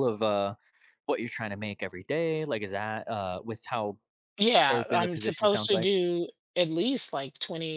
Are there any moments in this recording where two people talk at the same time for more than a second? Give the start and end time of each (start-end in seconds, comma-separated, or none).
4.7-5.9